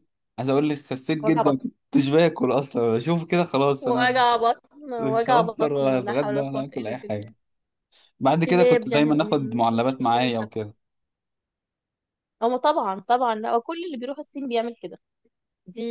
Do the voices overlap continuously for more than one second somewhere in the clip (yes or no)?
yes